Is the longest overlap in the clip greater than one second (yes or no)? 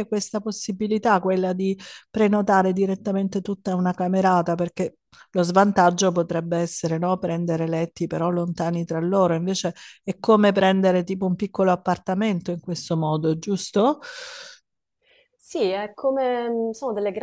no